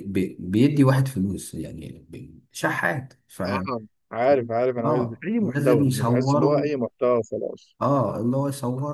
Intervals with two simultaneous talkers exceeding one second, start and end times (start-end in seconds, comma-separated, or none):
4.8-6.6